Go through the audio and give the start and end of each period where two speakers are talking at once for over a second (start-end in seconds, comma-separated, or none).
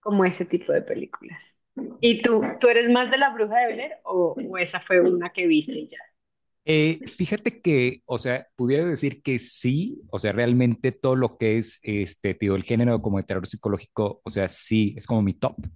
none